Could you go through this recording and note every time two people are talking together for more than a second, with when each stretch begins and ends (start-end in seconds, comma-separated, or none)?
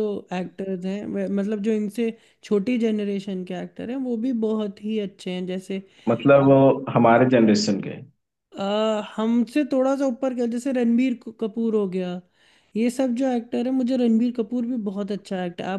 none